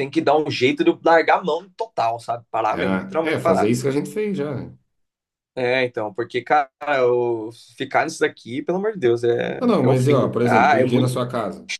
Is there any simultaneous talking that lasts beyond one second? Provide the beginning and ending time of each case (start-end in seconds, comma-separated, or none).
9.6-11.2